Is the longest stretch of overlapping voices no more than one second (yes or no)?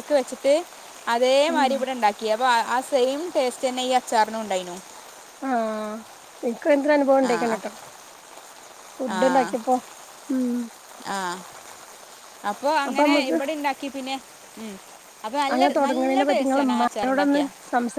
no